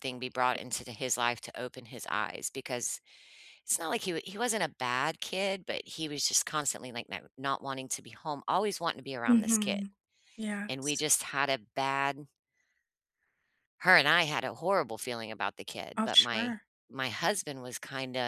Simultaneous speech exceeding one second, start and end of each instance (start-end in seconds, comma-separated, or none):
none